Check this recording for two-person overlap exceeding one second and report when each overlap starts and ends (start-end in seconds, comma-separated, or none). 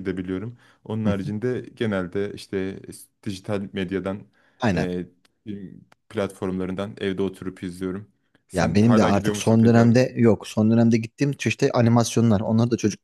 8.5-9.9